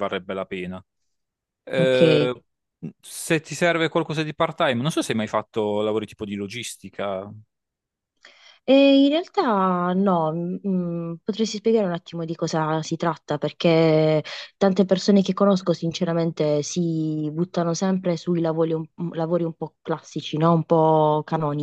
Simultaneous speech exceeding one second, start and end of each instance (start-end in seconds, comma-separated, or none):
none